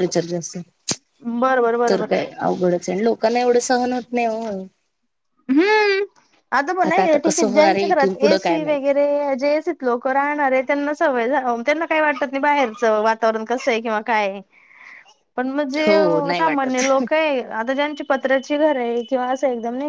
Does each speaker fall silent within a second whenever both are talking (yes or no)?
no